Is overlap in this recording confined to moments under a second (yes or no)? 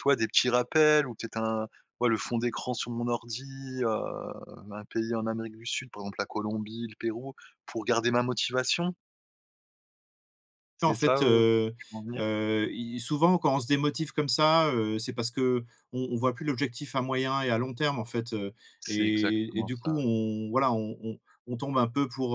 no